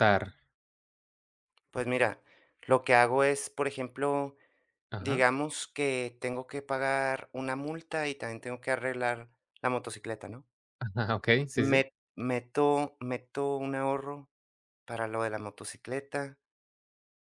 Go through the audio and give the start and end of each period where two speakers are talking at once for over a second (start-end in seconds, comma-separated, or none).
none